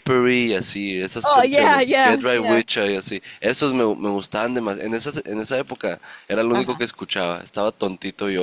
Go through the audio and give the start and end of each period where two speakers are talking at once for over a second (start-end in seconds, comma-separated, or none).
1.2-2.6